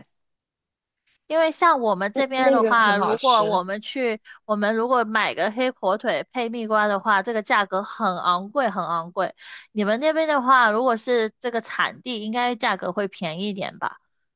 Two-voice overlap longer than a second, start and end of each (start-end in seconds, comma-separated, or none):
2.1-3.6